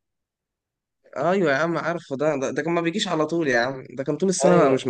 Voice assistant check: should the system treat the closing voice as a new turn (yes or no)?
yes